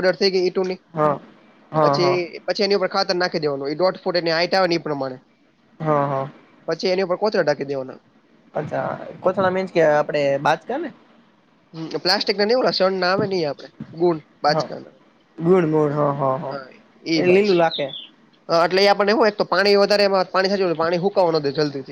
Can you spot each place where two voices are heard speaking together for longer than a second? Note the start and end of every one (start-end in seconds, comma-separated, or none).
none